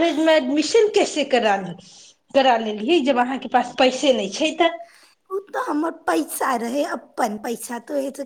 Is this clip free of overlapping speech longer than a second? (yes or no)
yes